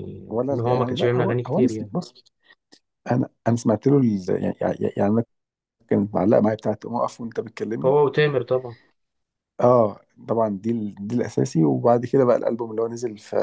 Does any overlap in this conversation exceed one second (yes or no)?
yes